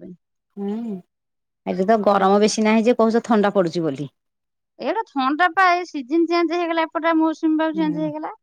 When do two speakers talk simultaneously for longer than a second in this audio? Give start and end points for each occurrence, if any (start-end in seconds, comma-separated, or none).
none